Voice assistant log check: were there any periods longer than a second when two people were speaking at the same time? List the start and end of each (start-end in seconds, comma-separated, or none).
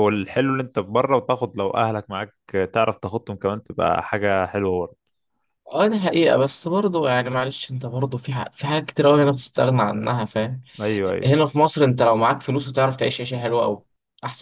none